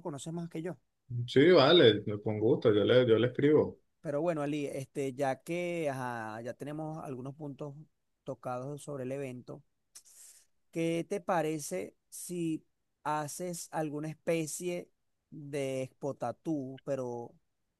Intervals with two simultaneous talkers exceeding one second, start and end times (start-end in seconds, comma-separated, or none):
none